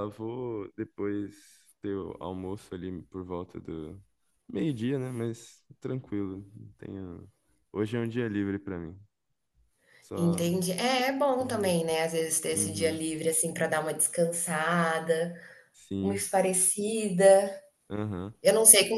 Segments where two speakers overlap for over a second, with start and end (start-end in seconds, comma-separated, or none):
none